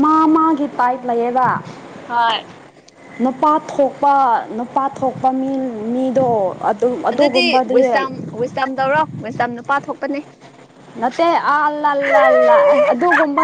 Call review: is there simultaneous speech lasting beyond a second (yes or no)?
no